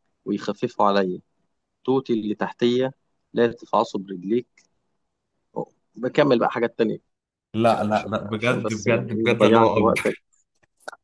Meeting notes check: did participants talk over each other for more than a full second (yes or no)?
yes